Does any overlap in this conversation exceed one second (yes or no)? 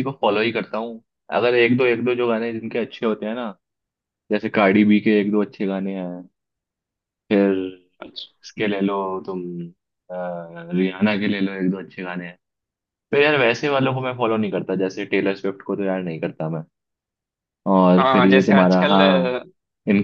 yes